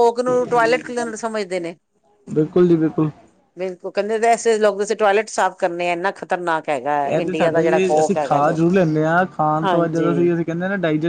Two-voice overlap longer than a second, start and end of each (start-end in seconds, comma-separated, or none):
7.0-8.6